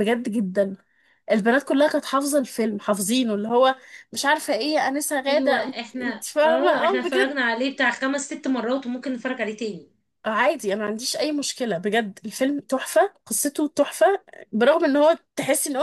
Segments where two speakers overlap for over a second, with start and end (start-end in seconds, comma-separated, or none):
5.3-7.4